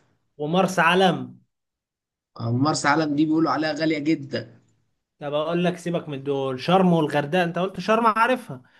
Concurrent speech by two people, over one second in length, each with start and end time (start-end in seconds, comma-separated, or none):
none